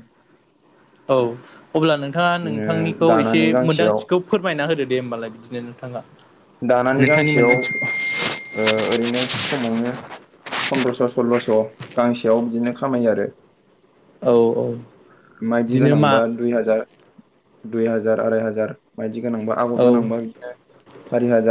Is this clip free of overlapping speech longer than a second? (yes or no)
no